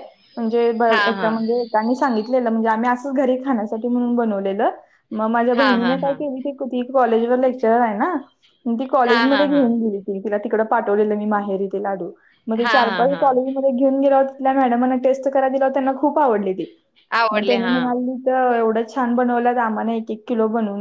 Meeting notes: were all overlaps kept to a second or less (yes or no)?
yes